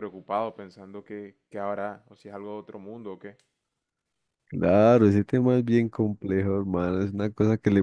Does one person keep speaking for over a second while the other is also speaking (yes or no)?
no